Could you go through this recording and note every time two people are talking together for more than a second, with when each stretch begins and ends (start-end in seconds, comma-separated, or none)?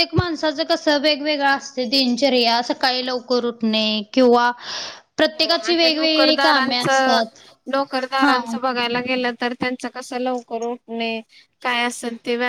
5.4-6.8